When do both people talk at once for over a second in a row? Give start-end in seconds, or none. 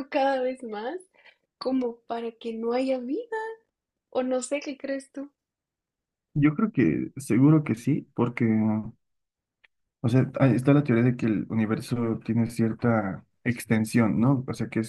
none